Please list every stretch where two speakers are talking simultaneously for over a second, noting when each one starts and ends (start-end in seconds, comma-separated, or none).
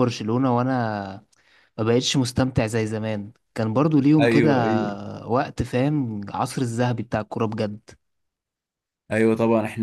none